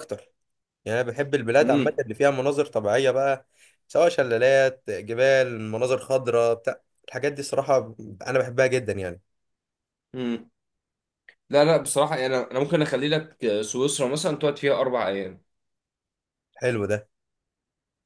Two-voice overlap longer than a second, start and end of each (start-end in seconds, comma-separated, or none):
none